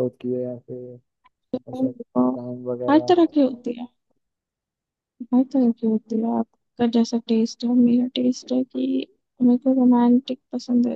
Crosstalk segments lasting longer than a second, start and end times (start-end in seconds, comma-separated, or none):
none